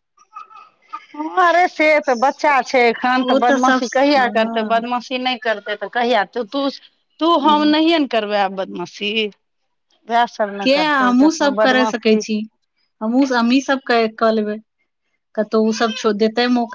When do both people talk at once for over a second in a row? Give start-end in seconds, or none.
none